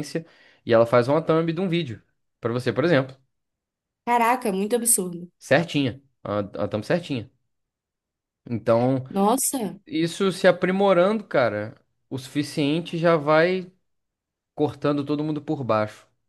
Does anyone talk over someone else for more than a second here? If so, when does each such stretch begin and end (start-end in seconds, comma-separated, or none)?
none